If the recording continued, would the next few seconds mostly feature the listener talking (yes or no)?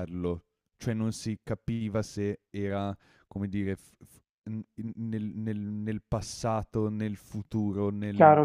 yes